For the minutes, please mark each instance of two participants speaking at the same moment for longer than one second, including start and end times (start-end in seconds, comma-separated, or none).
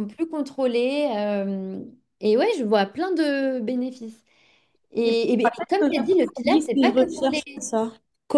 5.0-7.4